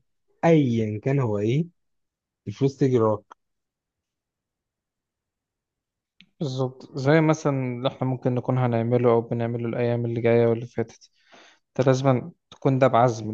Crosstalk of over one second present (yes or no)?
no